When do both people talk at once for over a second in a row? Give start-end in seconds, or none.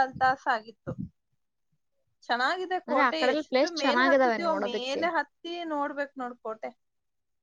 2.9-5.0